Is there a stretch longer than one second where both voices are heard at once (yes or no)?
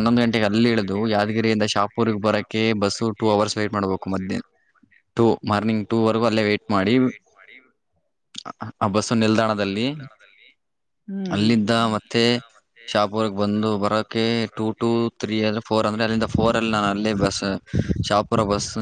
yes